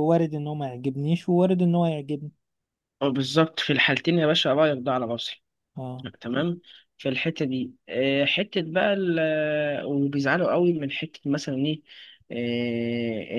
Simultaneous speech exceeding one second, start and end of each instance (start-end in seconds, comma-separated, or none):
none